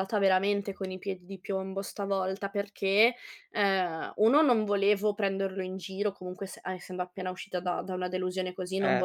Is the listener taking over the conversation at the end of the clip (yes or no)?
no